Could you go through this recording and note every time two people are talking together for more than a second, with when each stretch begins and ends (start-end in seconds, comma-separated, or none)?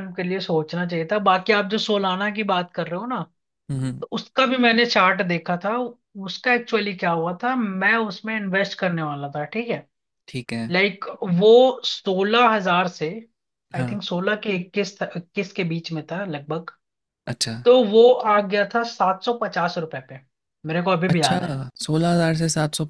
none